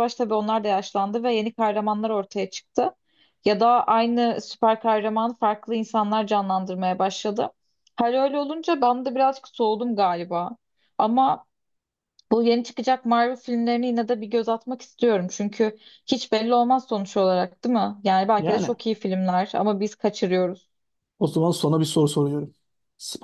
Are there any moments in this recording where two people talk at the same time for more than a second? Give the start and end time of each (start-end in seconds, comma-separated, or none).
none